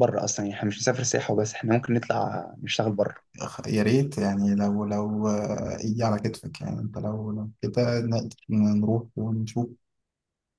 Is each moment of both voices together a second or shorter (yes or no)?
yes